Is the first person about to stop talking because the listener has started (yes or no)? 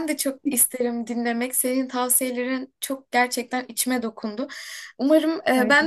no